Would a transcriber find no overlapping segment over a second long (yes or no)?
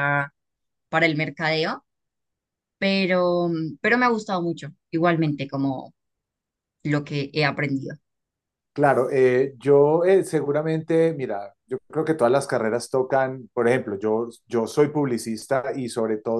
yes